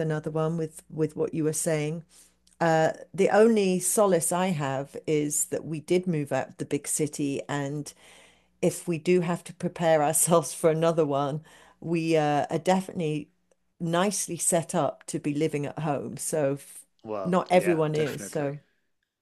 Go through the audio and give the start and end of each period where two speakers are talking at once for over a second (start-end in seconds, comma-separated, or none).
17.2-18.6